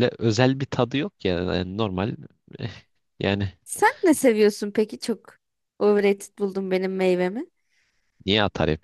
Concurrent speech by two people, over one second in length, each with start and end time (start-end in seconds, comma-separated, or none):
none